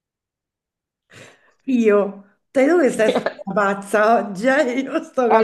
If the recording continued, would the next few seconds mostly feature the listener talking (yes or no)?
yes